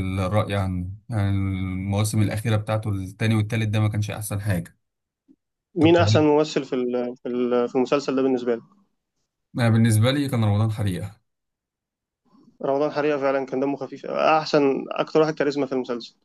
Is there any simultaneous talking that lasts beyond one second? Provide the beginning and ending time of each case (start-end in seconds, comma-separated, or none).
none